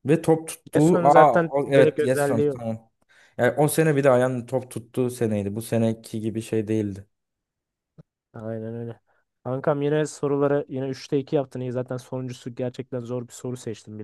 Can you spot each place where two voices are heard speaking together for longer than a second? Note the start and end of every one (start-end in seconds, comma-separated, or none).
0.7-2.6